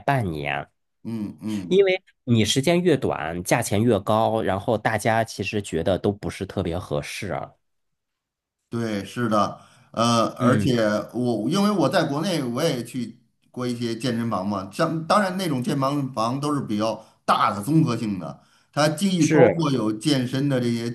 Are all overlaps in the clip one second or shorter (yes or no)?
yes